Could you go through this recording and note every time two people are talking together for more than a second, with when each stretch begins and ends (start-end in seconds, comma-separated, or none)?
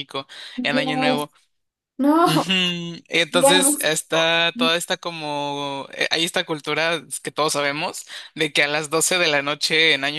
none